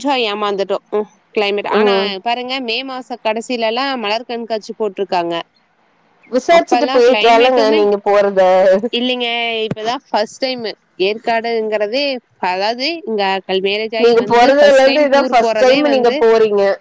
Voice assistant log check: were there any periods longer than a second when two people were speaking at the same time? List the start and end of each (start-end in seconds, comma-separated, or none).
14.0-16.2